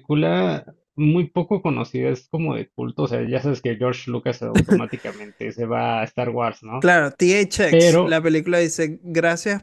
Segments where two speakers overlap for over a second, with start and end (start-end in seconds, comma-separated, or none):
none